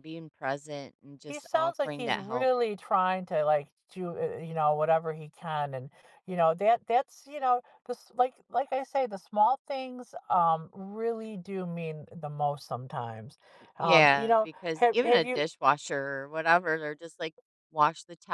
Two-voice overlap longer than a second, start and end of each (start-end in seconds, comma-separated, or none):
1.2-2.5, 13.8-15.4